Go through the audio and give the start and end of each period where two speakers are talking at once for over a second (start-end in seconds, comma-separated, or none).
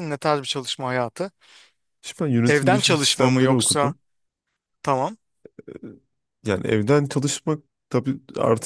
2.5-3.9